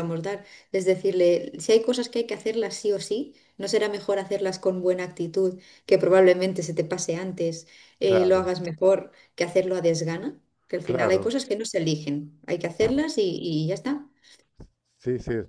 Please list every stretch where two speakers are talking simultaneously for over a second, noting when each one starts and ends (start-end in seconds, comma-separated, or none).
none